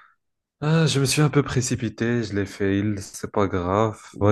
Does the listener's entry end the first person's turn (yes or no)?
no